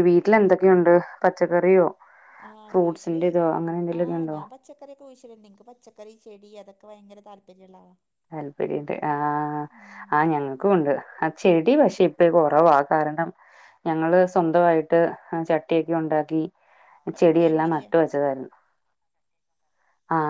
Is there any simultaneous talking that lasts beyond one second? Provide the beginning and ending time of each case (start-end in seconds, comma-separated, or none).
none